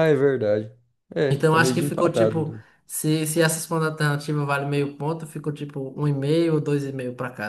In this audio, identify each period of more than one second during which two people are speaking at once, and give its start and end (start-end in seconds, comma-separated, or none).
1.3-2.6